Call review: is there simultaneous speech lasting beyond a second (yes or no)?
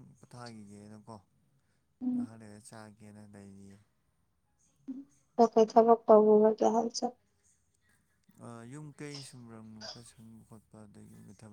no